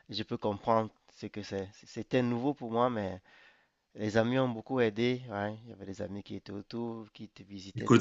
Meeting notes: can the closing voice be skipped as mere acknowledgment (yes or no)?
no